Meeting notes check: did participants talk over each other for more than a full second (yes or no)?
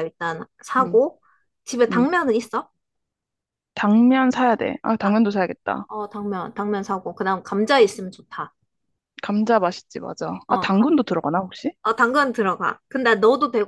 no